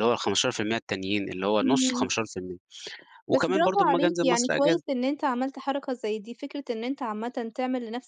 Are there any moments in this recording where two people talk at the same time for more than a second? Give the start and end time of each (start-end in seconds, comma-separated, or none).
3.3-4.8